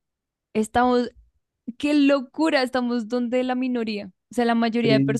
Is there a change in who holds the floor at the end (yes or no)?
no